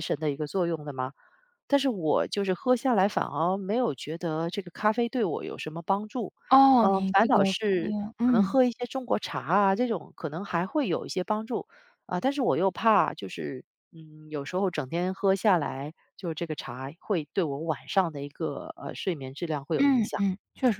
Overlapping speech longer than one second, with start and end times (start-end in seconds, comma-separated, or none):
6.8-8.6